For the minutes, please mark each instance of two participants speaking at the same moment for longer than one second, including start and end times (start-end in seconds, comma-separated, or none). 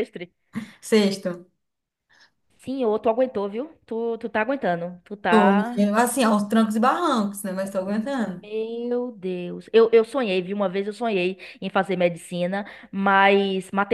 none